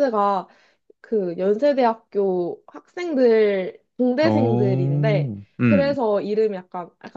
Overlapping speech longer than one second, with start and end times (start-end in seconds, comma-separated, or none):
4.2-6.0